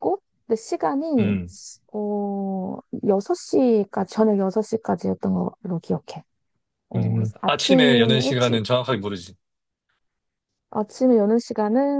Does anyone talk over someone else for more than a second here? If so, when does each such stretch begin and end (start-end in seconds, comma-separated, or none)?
7.0-8.6